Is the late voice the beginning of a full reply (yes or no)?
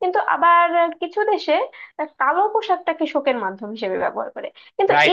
yes